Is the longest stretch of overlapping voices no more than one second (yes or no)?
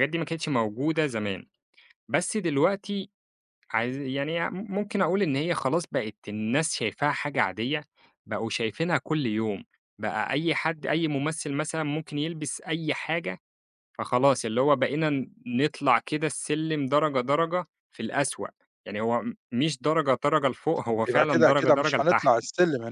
no